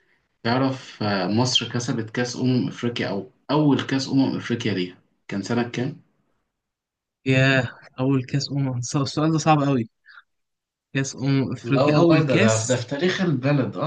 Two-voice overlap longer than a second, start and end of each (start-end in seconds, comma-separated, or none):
11.6-12.9